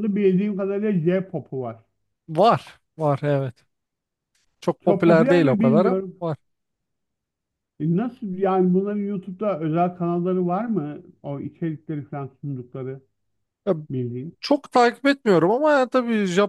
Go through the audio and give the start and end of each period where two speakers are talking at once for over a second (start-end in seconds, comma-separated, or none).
4.9-6.2